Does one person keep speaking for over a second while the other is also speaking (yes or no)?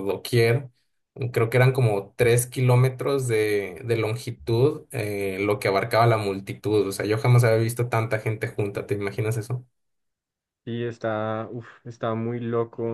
no